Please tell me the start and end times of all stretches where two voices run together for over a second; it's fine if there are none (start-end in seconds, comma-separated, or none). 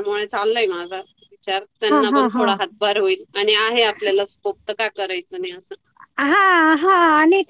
none